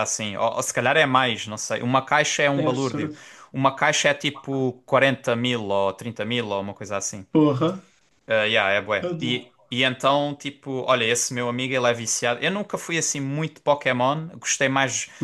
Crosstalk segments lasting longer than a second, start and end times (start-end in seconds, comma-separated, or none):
none